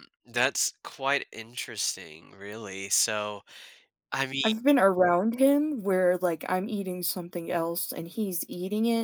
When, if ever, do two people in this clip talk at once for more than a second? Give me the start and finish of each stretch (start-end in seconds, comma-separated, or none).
none